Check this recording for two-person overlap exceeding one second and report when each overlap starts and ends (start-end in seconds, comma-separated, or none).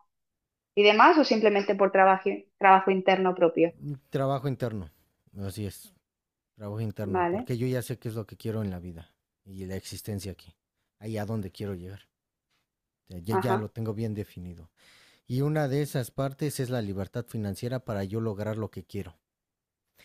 none